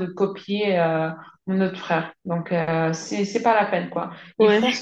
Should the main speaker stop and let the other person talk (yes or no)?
no